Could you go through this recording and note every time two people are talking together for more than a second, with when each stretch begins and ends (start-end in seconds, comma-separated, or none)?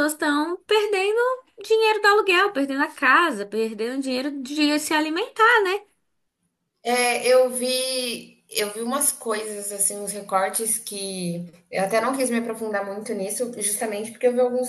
none